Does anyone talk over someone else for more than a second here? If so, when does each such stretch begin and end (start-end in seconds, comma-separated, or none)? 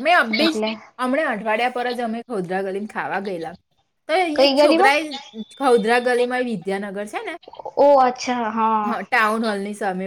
none